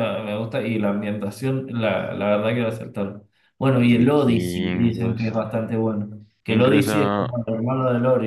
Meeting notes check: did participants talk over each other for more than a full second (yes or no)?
yes